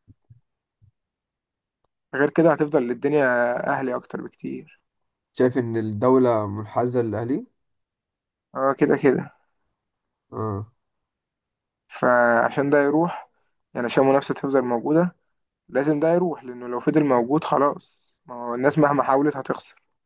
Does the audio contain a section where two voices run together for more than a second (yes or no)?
no